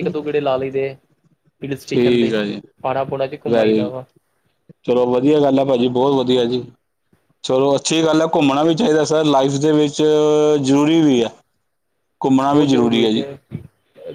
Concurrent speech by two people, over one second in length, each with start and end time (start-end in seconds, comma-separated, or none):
none